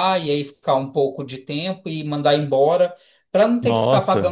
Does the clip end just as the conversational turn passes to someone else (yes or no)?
no